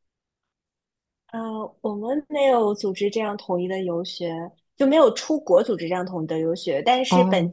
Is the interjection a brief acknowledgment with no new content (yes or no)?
yes